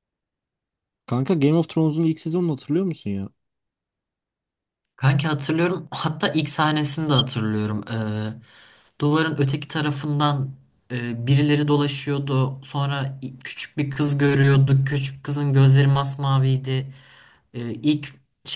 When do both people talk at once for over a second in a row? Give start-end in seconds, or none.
none